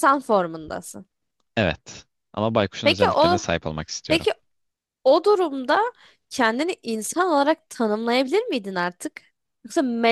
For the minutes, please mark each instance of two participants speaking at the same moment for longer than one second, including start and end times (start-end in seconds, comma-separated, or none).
none